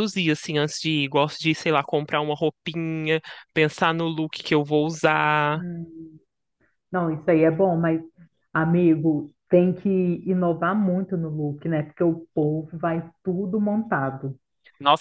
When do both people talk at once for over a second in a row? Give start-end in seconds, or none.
none